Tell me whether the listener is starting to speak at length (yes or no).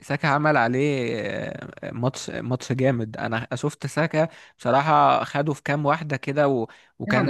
yes